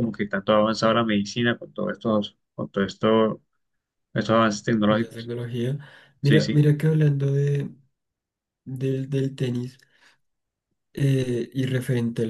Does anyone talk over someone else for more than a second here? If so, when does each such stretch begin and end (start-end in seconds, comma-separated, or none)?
none